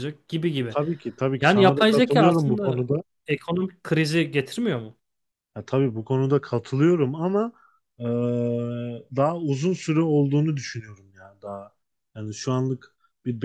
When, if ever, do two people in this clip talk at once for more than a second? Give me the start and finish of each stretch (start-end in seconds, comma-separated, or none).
1.4-2.8